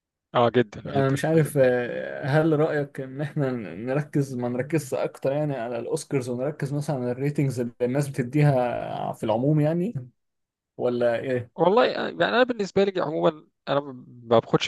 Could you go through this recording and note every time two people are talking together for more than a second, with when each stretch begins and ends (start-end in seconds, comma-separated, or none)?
none